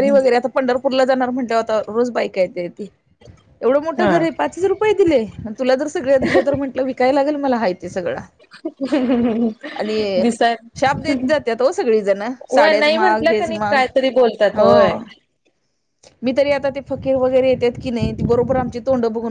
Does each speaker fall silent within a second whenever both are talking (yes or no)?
no